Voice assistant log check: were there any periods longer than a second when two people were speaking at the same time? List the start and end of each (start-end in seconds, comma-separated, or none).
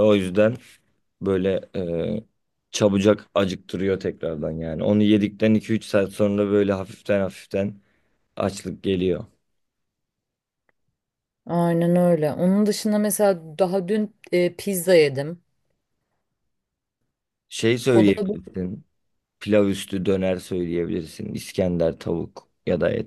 none